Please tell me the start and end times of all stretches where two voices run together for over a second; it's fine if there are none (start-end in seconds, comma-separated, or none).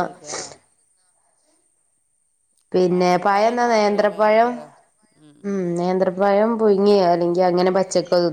2.9-4.5